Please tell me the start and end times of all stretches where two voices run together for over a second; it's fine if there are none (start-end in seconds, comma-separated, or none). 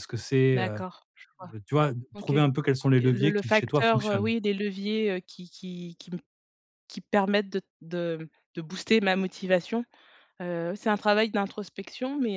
3.0-4.3